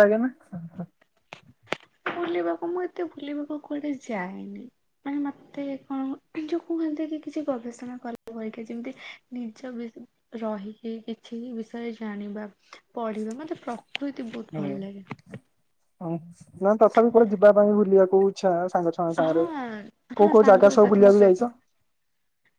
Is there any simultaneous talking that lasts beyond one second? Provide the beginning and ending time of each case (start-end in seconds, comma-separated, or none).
20.2-21.5